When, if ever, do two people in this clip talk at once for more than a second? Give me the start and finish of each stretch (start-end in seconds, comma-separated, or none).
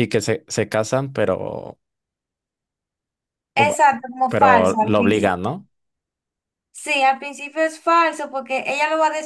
4.3-5.5